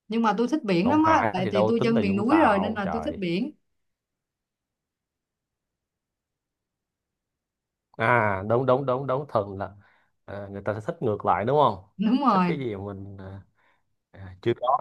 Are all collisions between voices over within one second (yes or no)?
no